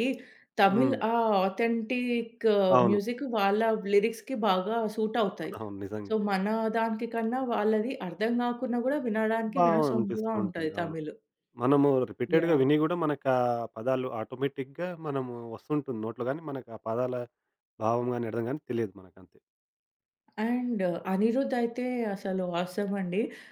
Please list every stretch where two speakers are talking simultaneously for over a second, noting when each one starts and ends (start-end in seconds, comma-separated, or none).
9.6-10.9